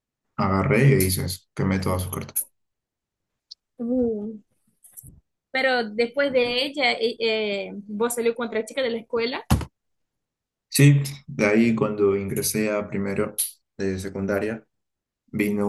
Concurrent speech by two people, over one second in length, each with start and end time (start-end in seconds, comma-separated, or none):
none